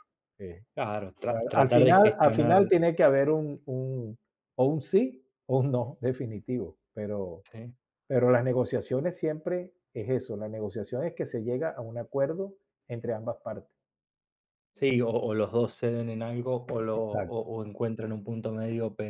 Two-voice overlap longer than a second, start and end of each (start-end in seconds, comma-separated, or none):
1.3-2.6